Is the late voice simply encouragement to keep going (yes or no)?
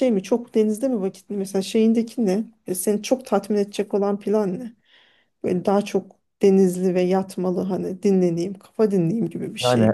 no